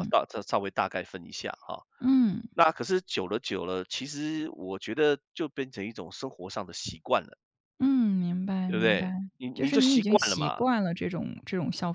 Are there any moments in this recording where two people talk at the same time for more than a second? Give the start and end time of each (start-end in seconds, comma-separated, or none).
8.7-10.7